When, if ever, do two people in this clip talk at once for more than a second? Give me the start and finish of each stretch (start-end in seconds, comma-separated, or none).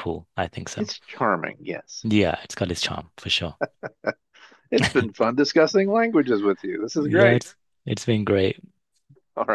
none